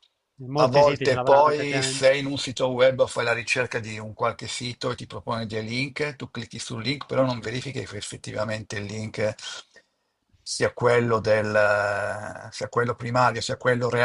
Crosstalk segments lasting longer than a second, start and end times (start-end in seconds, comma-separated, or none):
0.6-2.1